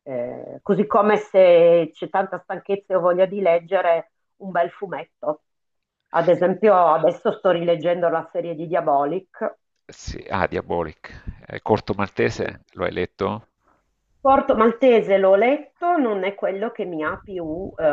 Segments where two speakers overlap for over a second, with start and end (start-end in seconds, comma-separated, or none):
none